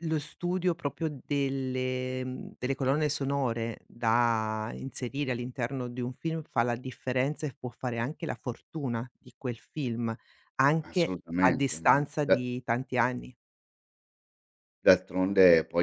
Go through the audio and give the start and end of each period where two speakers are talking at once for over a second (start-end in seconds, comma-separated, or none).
10.8-12.4